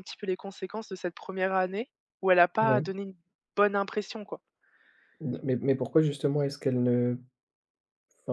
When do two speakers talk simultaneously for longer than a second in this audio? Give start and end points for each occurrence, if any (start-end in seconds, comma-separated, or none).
none